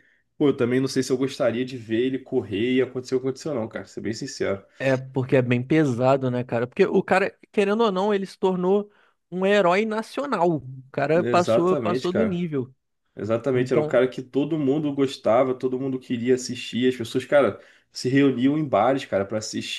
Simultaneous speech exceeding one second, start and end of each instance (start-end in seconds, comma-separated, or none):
11.1-12.4